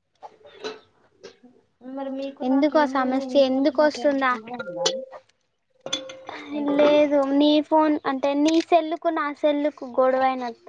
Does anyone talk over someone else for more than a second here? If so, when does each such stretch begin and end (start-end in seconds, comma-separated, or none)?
2.5-4.3